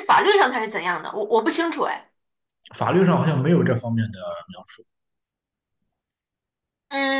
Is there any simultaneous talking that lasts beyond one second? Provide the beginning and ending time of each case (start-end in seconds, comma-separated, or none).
none